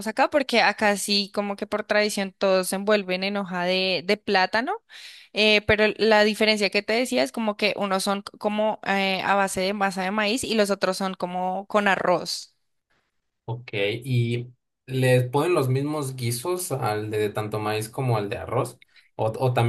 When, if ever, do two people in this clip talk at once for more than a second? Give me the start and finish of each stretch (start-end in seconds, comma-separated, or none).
none